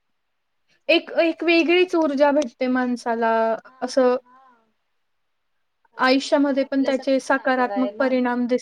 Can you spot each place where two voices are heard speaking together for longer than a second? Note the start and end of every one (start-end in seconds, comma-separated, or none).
1.0-2.5, 6.0-8.1